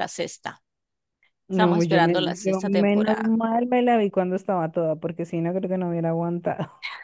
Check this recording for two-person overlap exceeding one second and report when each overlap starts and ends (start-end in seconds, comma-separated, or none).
1.5-3.3